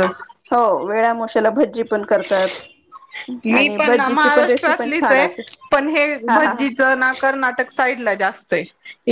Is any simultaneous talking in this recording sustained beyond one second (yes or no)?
yes